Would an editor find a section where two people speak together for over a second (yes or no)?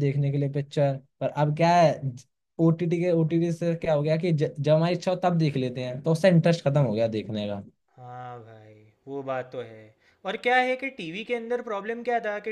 no